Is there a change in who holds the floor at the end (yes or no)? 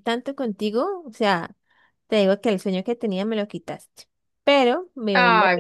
no